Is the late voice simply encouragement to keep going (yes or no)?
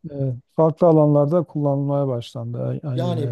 no